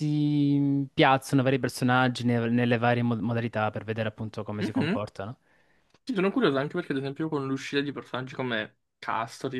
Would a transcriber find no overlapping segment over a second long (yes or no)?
yes